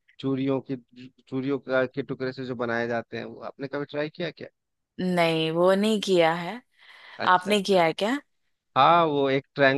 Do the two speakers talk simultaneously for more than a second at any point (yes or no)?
no